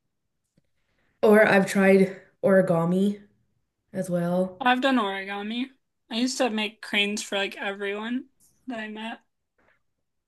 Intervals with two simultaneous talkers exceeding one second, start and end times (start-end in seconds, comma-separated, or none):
none